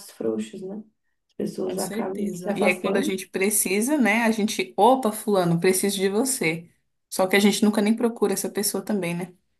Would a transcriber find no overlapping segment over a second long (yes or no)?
no